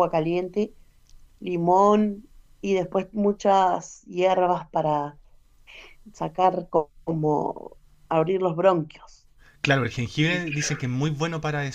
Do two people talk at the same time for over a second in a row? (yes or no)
no